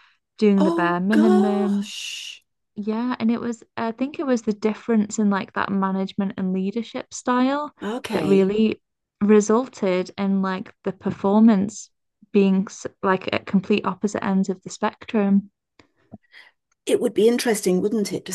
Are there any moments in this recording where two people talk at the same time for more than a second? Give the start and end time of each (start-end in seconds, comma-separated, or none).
0.6-1.9